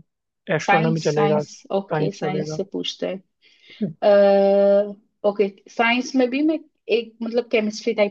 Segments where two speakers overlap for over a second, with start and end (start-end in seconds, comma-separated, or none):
0.6-2.6